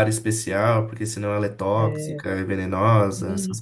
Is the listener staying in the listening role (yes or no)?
no